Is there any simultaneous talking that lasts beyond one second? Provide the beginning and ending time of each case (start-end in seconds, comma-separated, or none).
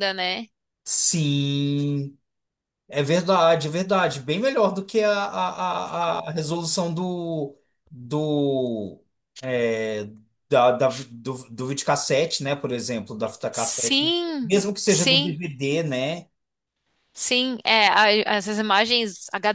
13.5-15.4